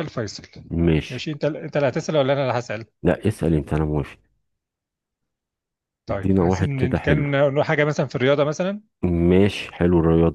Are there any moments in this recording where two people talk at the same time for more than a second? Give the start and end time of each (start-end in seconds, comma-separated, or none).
6.1-7.3